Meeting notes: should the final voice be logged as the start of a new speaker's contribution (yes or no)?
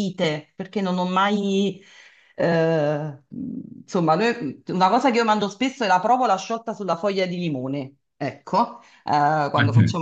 no